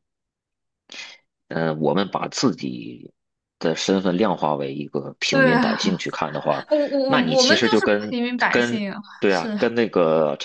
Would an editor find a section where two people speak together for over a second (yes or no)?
yes